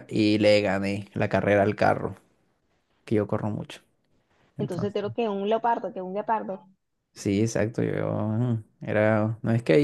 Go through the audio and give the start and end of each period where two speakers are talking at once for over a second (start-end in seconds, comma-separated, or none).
none